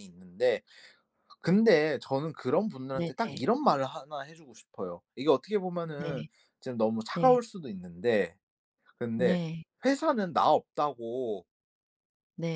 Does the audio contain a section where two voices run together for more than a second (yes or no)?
no